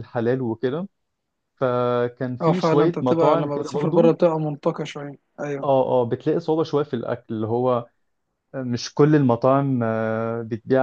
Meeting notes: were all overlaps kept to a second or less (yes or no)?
no